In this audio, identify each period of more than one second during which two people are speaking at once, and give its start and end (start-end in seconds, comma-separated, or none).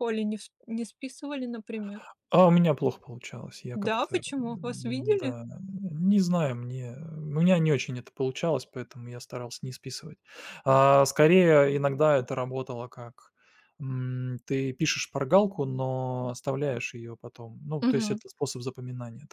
3.7-5.3